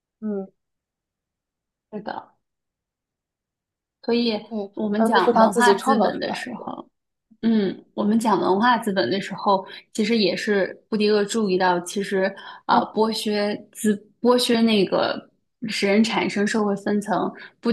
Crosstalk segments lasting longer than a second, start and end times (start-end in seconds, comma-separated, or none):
4.5-6.7